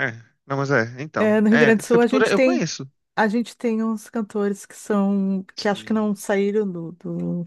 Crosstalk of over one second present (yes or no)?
yes